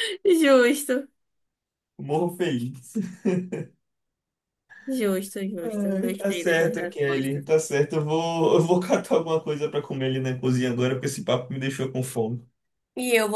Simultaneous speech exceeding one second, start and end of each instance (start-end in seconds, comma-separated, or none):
5.6-7.5